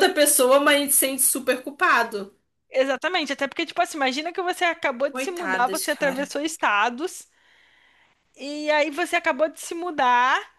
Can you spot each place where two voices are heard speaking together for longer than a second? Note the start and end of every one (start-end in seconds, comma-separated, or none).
5.1-6.3